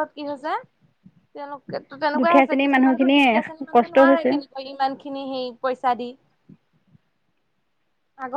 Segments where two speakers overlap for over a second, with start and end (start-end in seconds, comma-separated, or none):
2.2-4.3